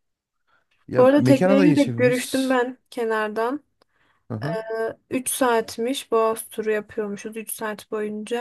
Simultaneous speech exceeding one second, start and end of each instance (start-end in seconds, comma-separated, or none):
1.0-2.5